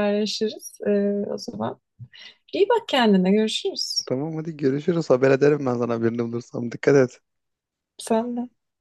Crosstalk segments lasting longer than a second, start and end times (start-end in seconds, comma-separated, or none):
none